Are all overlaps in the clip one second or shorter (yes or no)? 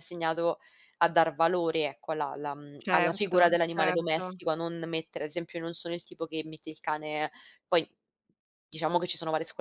no